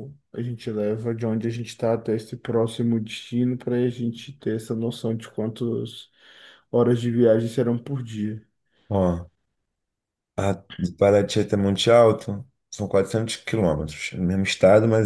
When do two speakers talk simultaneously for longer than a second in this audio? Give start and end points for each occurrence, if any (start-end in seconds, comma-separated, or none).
none